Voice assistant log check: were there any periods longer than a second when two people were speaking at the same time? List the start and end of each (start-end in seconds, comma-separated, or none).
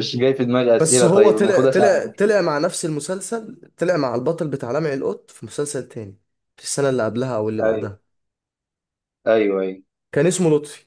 0.8-2.1